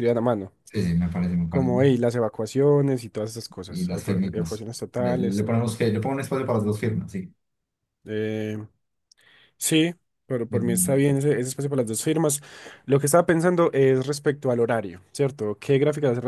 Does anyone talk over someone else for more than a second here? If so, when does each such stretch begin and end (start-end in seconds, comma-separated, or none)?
3.7-5.7